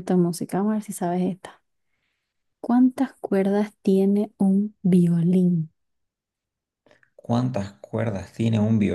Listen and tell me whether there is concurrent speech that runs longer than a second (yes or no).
no